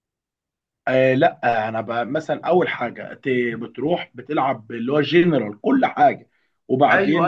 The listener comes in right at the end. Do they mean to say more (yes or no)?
yes